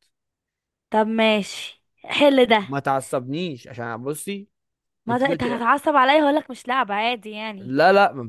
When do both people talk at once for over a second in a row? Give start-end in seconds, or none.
none